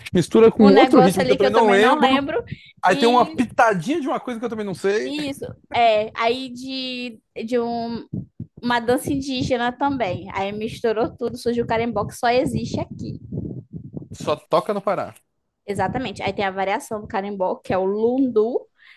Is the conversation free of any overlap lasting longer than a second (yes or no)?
no